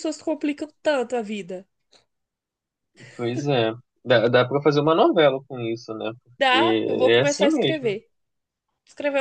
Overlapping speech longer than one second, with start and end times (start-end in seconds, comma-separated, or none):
6.4-7.9